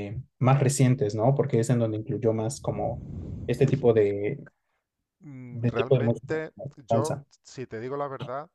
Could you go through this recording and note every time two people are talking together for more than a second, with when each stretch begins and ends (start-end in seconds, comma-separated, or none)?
5.5-7.3